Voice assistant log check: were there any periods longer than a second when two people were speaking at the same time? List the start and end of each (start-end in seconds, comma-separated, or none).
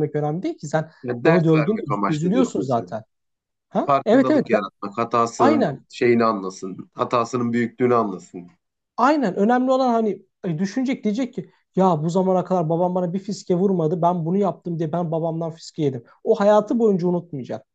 1.0-3.0